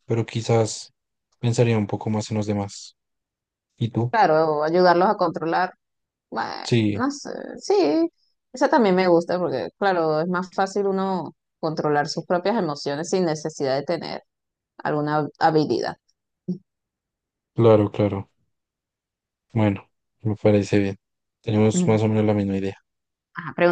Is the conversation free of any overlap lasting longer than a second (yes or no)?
yes